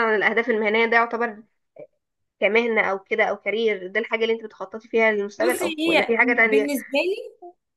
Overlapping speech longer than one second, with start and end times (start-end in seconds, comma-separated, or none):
5.4-6.7